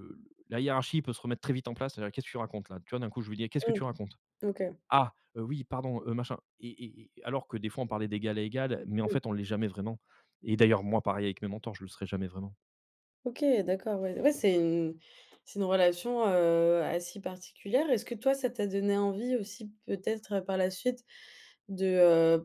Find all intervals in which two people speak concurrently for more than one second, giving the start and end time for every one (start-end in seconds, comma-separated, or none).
none